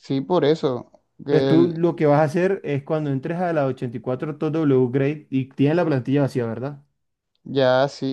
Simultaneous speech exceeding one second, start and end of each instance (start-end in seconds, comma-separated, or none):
none